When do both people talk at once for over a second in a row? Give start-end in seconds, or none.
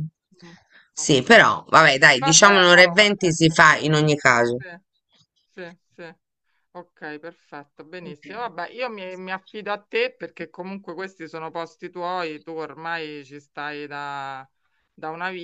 2.2-3.6